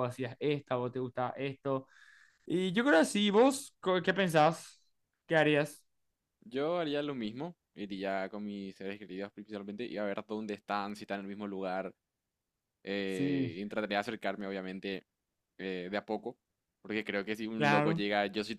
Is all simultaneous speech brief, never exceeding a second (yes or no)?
yes